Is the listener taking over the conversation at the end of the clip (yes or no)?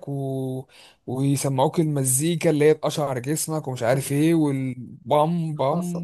no